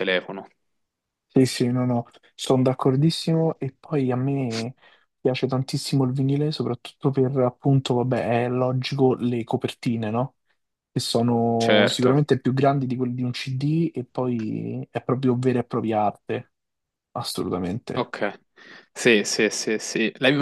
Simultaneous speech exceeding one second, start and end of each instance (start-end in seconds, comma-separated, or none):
none